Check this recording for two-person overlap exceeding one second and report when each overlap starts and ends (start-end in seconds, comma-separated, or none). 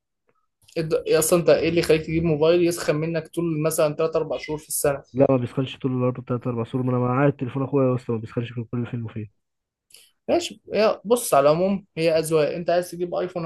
none